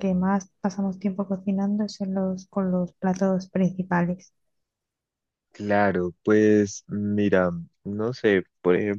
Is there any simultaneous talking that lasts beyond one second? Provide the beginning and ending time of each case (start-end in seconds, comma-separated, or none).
none